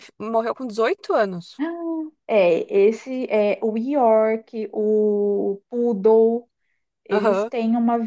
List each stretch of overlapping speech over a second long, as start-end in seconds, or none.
none